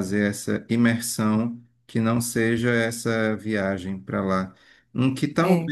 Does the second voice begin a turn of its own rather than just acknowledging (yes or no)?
no